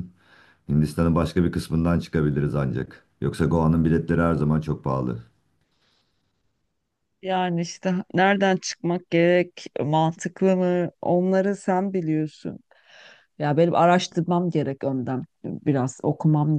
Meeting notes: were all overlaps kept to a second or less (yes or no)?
yes